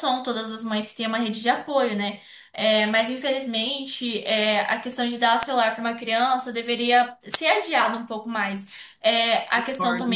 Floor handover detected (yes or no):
no